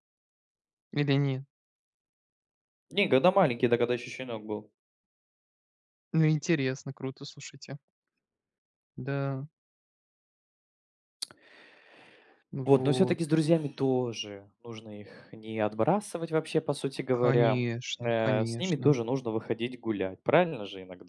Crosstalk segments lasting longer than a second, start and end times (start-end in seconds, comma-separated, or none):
17.1-18.9